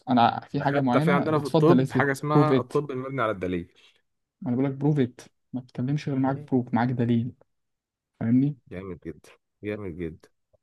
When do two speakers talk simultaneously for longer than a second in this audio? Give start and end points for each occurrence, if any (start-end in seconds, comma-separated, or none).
0.5-2.7